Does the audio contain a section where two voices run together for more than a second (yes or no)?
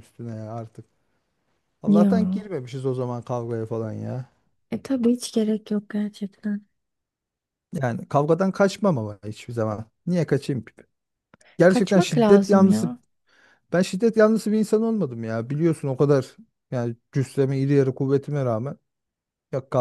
yes